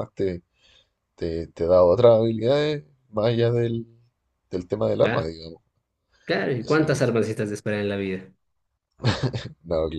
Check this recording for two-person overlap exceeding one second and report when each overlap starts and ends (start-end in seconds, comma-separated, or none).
none